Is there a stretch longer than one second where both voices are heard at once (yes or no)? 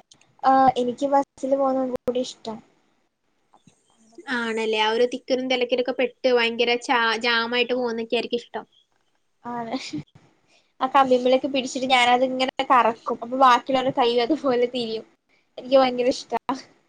no